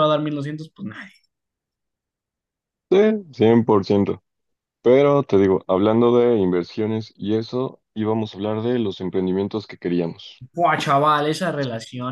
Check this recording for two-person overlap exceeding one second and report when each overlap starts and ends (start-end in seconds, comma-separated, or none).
none